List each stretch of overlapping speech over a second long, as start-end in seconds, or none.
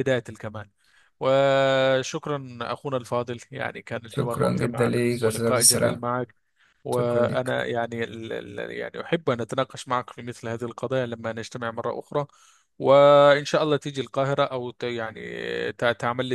4.1-6.0